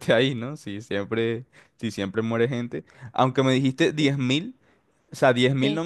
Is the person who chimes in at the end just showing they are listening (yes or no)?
yes